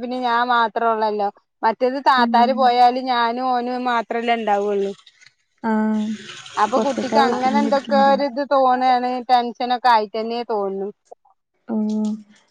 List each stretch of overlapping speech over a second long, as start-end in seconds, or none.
6.7-8.2